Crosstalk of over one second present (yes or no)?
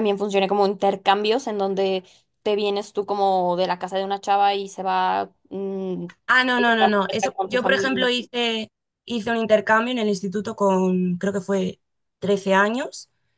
yes